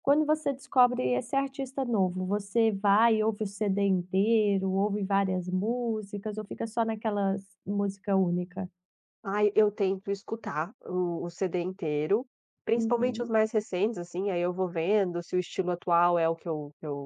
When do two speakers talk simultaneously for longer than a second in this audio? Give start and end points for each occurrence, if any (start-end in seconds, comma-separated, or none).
none